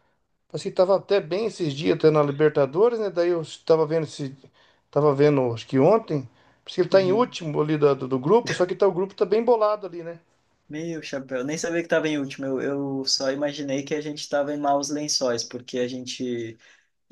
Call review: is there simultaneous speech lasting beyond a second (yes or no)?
no